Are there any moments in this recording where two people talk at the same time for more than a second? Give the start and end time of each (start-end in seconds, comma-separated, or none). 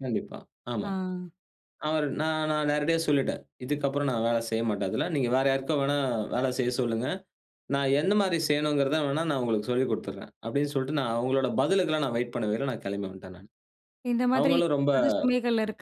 none